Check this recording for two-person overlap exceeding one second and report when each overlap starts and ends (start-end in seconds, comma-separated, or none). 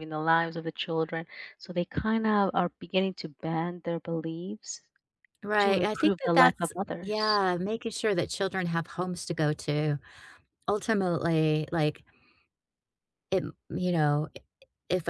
5.6-7.4